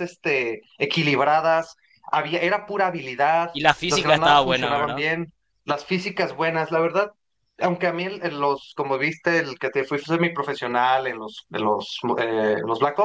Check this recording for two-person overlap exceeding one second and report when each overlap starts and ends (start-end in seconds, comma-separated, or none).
3.5-5.1